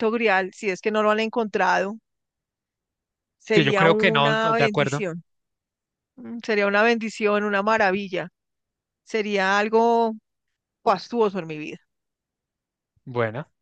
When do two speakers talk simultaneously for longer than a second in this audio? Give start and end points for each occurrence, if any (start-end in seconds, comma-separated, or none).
3.5-5.0